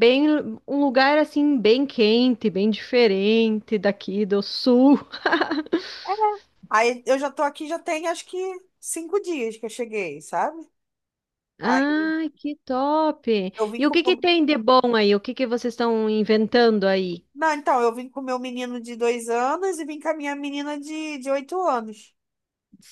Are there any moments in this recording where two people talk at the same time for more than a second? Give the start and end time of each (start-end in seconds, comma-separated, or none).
none